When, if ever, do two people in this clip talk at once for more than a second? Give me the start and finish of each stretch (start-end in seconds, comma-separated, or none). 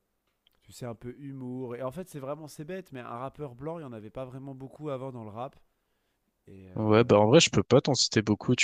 none